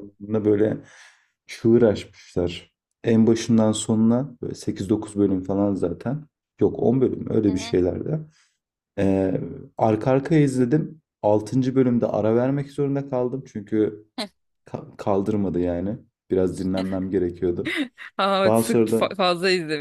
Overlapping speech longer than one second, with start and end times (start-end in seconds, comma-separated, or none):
none